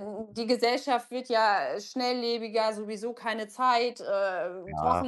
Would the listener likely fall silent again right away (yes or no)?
yes